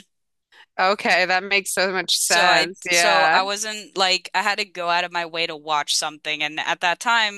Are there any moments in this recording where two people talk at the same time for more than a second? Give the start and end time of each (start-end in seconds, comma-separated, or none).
2.1-3.4